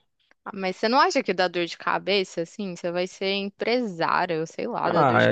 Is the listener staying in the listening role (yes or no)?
no